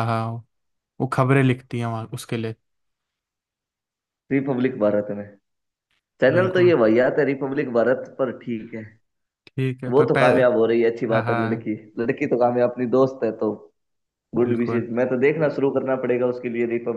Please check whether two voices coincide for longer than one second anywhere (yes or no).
no